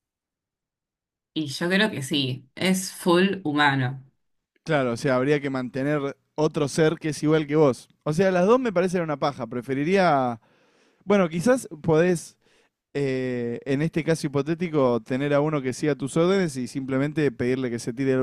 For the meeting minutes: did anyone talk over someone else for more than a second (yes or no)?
no